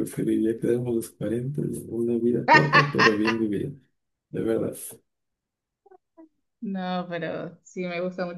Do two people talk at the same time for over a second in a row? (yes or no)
no